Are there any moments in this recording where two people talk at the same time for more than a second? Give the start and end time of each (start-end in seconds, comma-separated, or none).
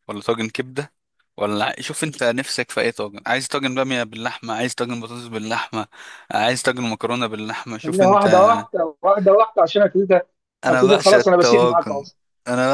10.7-12.0